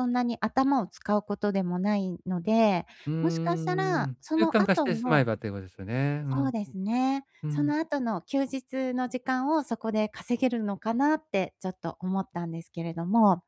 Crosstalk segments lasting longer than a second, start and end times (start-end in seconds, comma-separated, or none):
3.2-5.2